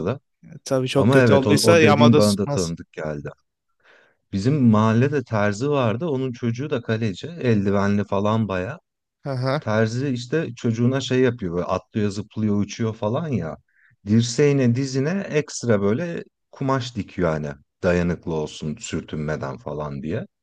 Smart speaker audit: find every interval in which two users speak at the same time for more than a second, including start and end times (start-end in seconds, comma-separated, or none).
0.9-2.7